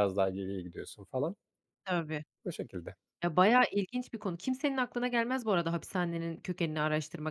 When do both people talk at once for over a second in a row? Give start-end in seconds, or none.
none